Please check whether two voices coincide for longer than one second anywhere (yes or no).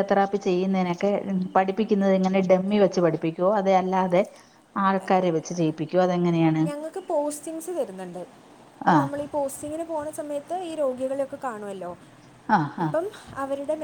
no